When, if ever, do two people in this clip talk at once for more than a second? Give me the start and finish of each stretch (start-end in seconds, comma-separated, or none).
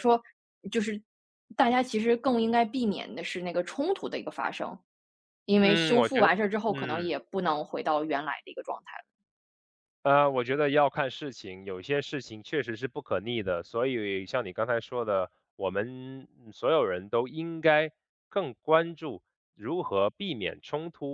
5.6-7.1